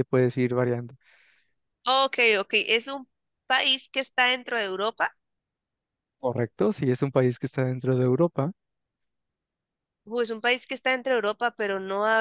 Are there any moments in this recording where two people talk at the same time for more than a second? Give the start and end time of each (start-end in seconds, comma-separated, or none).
none